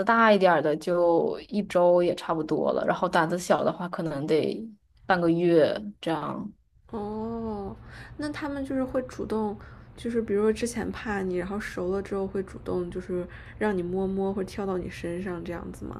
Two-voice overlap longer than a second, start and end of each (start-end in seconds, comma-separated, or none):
none